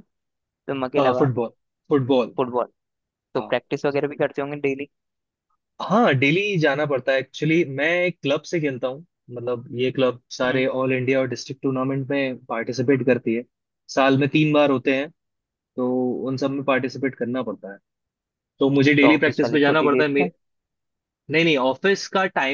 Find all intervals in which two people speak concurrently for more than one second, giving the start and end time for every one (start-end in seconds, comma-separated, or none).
19.0-20.3